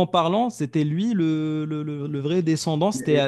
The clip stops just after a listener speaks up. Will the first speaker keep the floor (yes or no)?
no